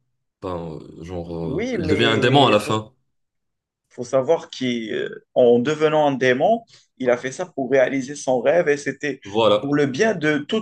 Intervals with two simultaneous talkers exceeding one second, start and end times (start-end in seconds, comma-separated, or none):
1.4-2.9